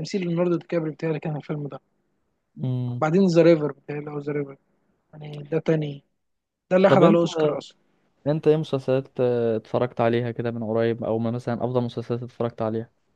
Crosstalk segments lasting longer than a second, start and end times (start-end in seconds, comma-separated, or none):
none